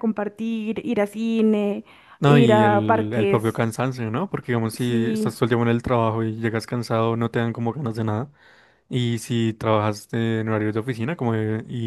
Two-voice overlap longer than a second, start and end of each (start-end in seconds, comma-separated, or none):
2.2-3.6